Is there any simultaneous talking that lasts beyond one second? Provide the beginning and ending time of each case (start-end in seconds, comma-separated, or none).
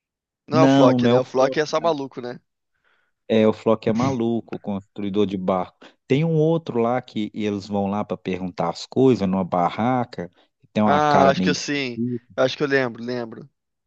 0.5-2.0, 10.8-12.4